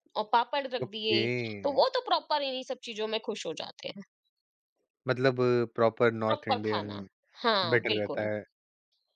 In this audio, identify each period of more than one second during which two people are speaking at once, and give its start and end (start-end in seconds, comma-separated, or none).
none